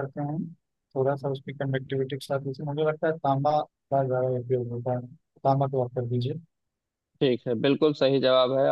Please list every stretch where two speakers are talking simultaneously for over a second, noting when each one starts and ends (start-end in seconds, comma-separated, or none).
none